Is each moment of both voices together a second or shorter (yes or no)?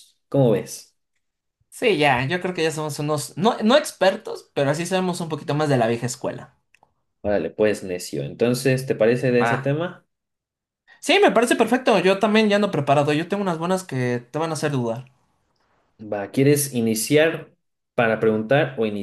yes